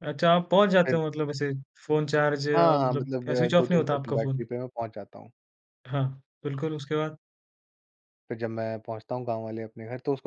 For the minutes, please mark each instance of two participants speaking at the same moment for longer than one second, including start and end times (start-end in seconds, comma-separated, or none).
2.5-4.5